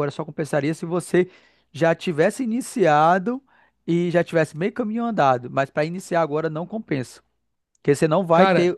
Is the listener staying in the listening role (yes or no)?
yes